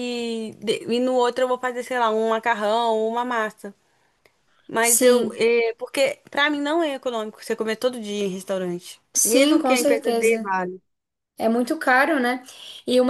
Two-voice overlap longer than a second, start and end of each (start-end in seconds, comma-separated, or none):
9.1-10.5